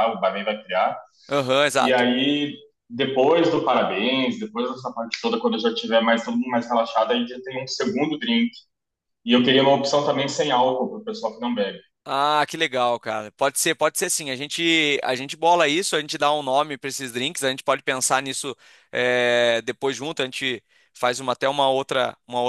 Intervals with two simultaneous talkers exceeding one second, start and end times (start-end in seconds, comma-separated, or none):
none